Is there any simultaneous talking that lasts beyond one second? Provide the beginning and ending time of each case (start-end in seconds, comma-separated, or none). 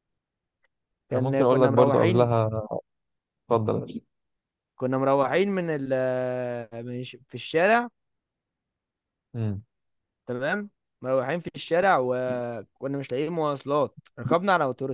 1.1-2.3